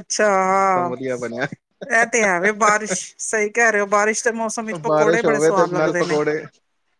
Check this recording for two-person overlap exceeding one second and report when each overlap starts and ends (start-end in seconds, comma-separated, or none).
4.8-6.2